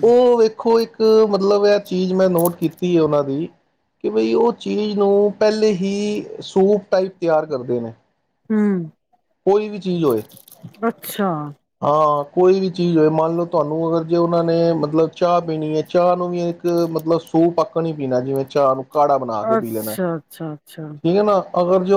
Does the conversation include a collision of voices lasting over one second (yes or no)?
yes